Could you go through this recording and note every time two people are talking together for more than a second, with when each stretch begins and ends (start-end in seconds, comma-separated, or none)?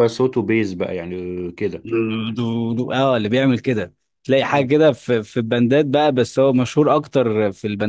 none